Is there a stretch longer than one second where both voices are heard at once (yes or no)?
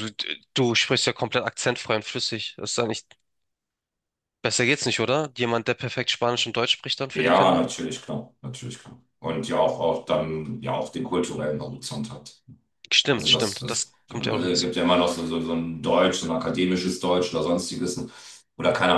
yes